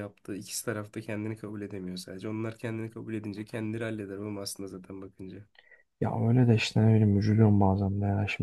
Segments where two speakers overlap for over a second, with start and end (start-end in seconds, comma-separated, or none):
none